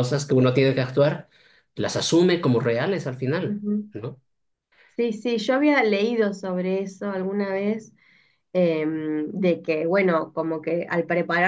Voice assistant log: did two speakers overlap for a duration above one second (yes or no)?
no